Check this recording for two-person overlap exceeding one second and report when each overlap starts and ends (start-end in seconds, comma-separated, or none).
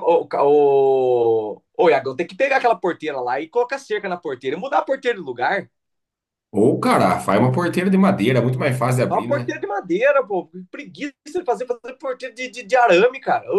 none